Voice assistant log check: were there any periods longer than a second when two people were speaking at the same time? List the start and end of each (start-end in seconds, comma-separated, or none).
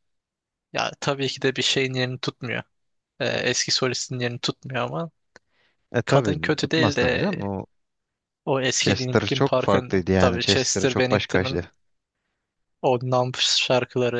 6.0-7.3, 8.8-11.6